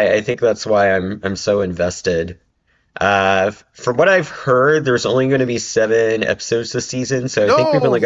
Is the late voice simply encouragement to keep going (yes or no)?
yes